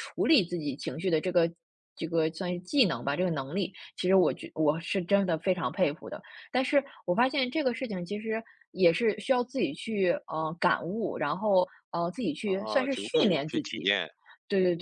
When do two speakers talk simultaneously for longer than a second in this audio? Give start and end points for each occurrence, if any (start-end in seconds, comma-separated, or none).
12.4-13.9